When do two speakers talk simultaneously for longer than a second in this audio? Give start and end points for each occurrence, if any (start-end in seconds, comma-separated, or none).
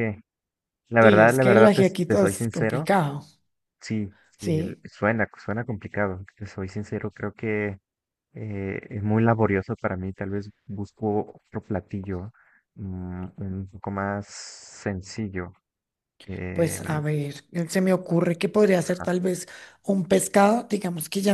1.0-2.9